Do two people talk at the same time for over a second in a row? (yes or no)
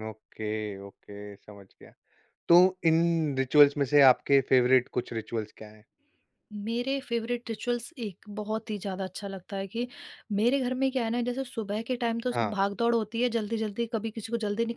no